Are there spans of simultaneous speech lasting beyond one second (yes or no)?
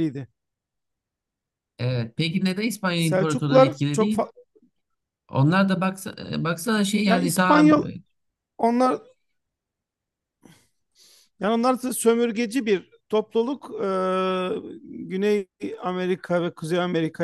yes